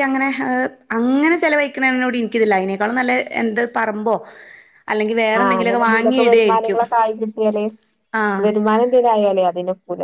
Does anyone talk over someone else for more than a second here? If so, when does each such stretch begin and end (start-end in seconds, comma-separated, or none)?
5.4-6.8